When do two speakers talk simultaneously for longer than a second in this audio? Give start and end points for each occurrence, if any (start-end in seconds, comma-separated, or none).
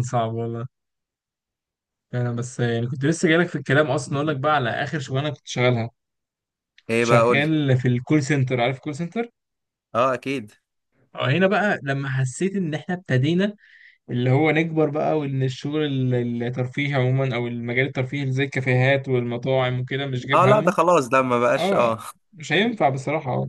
none